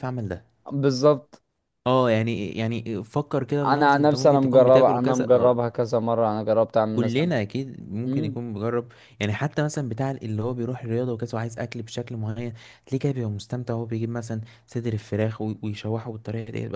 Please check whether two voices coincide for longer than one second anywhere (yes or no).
yes